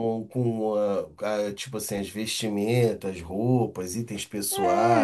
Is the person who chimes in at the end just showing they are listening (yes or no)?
no